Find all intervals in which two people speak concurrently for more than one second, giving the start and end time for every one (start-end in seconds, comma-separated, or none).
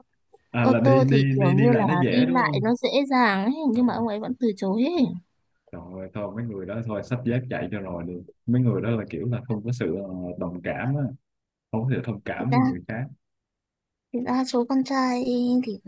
0.6-2.7